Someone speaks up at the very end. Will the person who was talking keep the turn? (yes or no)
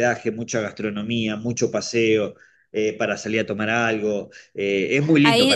no